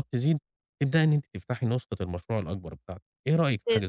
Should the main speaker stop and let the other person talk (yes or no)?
yes